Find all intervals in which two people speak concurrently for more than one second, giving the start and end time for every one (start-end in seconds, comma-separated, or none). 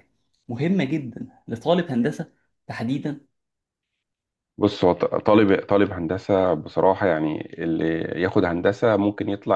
none